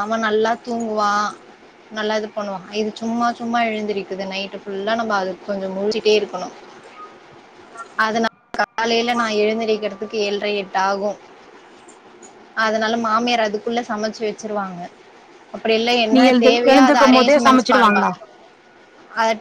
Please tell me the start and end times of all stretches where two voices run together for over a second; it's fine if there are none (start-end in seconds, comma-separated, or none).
16.1-18.1